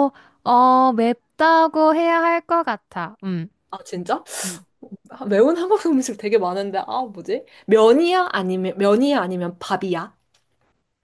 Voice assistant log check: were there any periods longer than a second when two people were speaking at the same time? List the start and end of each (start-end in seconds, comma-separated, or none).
none